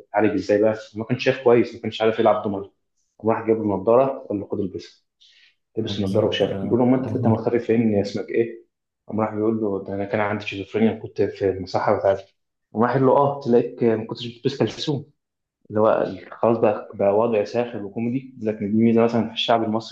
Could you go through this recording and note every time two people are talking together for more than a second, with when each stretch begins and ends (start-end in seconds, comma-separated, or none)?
5.9-7.4